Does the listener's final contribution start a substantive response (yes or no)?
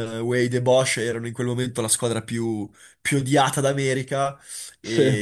no